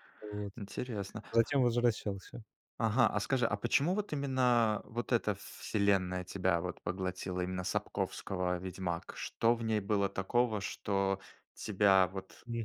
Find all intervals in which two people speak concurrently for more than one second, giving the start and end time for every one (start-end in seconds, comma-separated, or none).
none